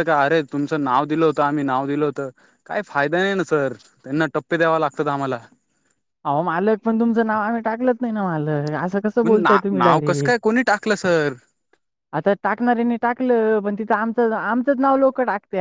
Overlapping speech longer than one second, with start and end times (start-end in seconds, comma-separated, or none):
none